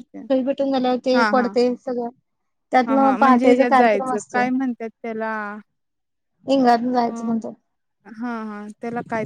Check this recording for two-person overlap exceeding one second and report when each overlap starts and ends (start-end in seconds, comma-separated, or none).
2.9-4.4